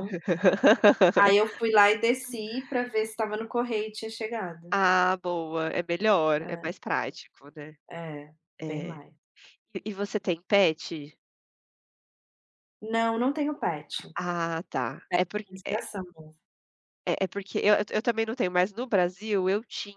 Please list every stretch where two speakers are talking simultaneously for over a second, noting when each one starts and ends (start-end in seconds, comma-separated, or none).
none